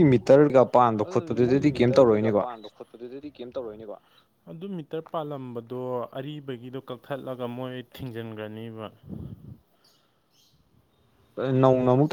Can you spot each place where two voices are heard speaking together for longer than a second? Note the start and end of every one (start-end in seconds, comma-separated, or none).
1.0-2.5